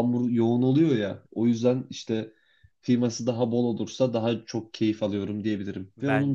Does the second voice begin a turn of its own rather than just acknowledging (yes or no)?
no